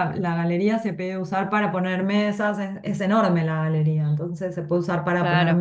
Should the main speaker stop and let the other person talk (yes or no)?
no